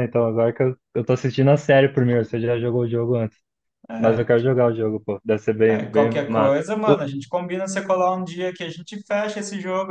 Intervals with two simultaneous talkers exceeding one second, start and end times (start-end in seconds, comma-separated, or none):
5.7-7.0